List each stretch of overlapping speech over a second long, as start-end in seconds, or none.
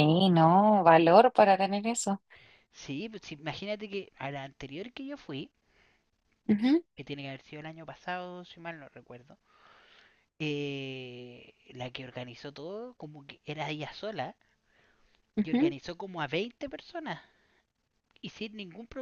none